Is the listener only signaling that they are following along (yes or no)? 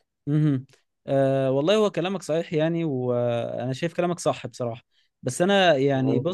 yes